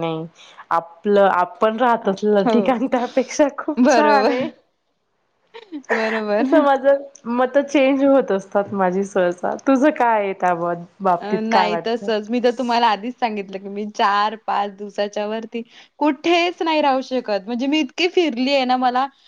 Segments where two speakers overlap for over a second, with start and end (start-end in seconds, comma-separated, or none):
none